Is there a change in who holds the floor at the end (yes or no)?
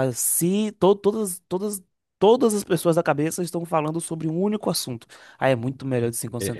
yes